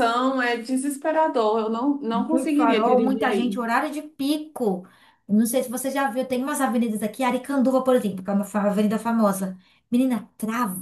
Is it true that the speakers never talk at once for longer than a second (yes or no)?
no